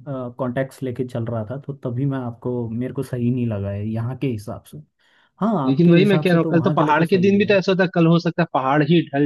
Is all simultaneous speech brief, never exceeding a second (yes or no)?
no